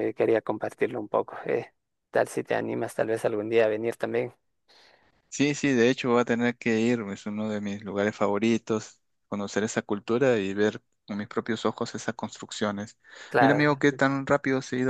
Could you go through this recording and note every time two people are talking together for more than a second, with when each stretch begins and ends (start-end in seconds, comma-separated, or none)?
none